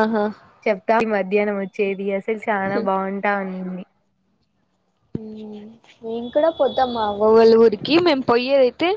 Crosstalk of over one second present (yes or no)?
no